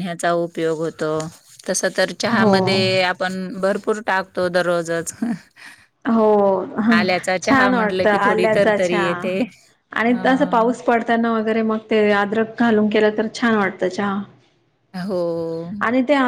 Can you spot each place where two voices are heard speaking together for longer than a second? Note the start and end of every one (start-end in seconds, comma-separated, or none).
7.4-9.1